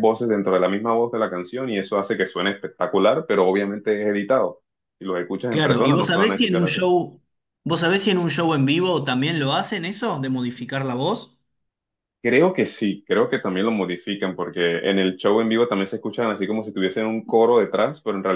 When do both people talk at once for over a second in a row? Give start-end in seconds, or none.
5.5-6.8